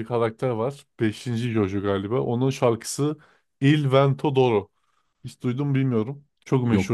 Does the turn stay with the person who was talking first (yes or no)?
yes